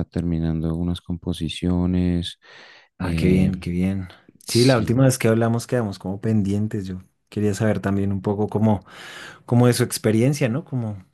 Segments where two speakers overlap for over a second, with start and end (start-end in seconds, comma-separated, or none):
none